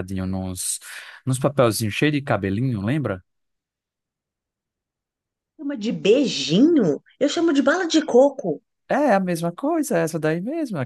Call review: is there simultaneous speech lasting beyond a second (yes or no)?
no